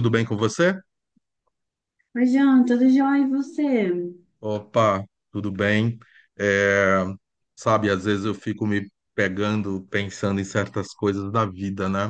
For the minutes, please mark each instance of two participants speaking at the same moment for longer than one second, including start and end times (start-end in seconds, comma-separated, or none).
none